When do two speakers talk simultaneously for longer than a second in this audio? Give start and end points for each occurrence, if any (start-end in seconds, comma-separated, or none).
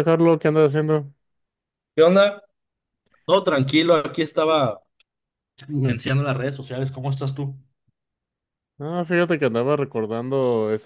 none